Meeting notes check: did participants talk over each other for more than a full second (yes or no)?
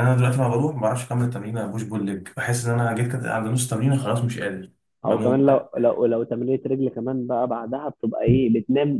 no